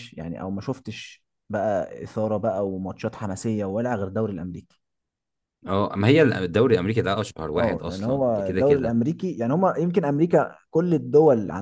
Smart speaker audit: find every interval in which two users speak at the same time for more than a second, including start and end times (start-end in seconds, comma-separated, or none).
7.6-9.0